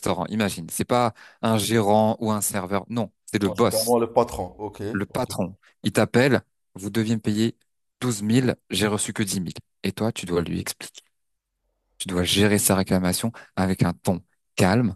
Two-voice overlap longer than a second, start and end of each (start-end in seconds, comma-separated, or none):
none